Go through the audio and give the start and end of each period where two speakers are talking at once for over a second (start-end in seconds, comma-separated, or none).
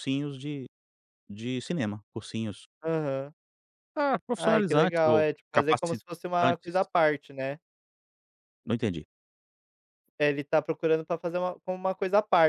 4.4-6.8